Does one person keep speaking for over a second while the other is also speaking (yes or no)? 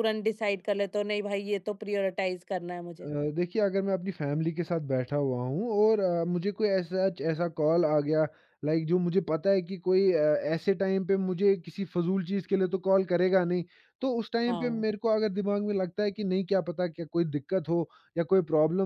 no